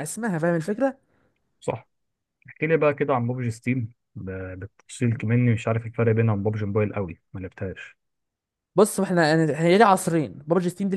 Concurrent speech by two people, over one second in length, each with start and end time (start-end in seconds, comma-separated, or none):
none